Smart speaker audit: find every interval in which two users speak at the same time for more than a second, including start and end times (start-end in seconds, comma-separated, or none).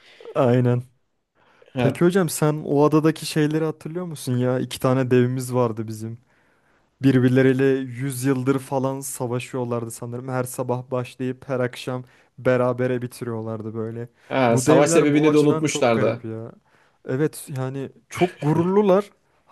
14.5-16.3